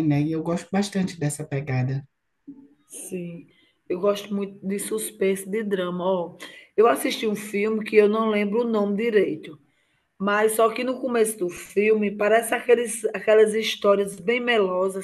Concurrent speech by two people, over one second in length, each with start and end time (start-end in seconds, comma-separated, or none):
none